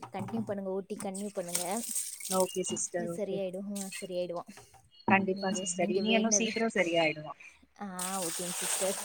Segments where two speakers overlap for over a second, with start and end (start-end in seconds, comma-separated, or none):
none